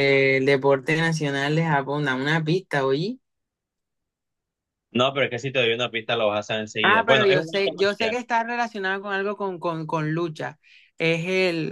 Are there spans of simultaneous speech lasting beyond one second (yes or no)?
yes